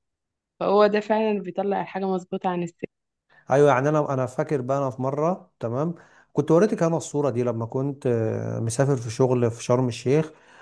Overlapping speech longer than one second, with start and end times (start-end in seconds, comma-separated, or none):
none